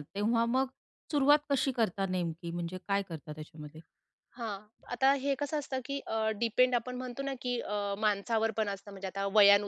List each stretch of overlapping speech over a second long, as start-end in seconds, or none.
none